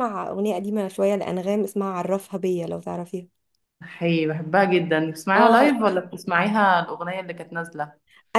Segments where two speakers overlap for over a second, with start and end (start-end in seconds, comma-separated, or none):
none